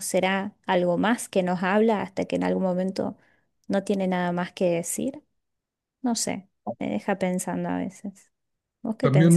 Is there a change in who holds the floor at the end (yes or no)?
yes